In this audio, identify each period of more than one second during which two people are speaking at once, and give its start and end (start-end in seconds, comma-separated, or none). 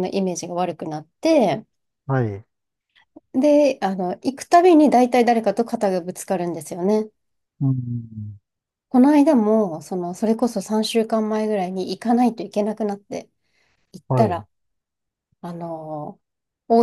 none